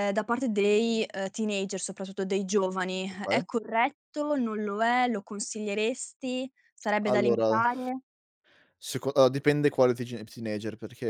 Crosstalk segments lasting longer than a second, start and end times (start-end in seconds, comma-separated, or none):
none